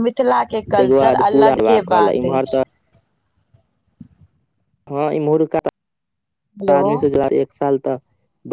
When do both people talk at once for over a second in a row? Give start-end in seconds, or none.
0.8-2.6